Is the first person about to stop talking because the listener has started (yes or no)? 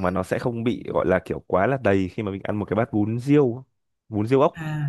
yes